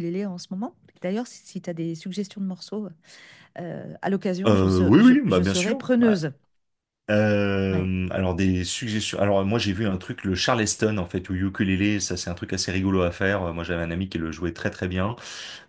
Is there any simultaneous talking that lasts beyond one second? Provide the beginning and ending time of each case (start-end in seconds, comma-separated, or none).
4.5-6.2